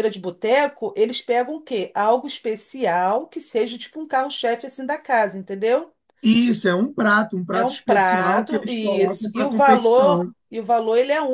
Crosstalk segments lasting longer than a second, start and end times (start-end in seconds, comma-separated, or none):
7.5-10.3